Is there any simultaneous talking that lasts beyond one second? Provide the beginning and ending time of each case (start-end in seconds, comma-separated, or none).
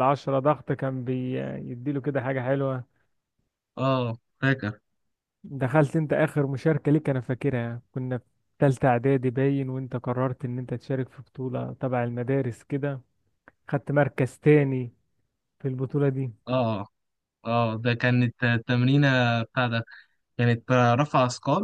none